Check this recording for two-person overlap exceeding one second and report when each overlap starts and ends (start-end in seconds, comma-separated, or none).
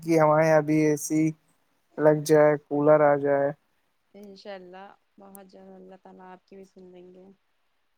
none